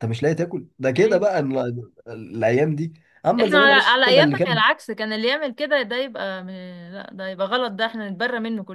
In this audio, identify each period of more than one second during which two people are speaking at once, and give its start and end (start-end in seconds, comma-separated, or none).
3.4-4.6